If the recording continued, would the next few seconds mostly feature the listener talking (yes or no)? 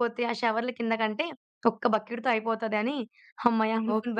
yes